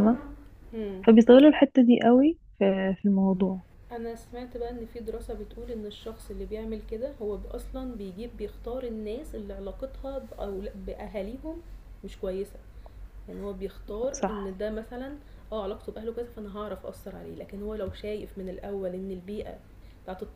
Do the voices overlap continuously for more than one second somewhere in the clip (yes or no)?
no